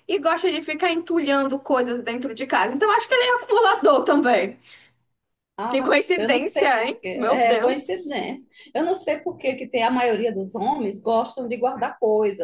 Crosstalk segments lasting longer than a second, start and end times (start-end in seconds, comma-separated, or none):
5.7-8.2